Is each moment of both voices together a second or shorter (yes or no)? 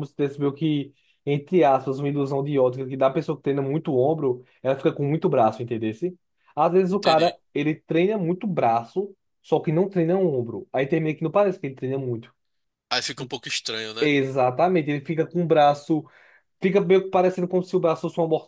yes